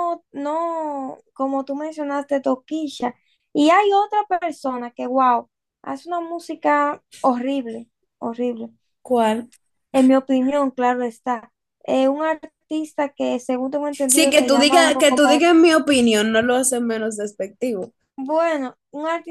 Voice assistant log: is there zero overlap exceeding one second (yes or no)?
no